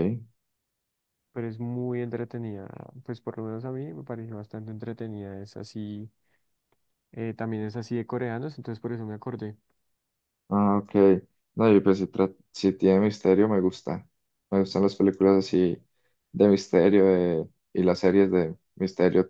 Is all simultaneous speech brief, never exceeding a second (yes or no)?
yes